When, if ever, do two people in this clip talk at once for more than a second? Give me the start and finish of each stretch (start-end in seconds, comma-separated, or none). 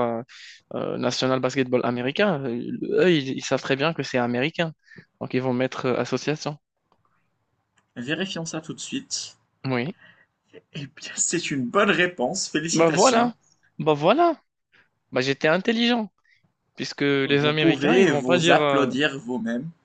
17.2-18.9